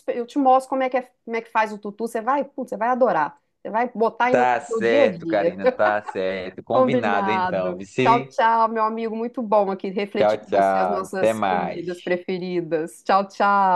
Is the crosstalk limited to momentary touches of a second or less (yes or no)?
no